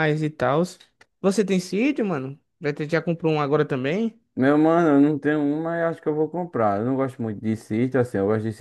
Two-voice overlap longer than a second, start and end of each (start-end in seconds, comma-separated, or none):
none